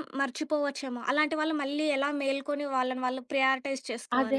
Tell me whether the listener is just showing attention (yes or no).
no